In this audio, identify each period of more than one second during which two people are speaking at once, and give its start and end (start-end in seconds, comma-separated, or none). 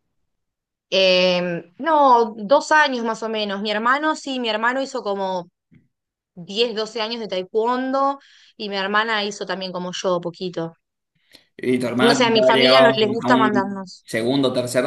12.1-14.0